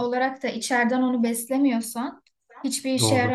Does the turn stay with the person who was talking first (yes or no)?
yes